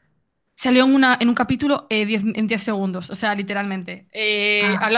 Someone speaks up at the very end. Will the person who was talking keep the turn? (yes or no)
yes